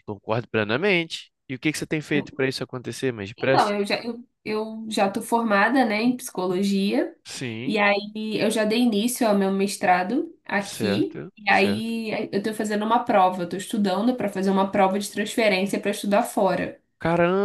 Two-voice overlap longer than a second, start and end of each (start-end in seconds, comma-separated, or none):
10.6-11.9